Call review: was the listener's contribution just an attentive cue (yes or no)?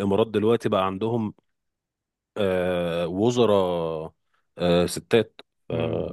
no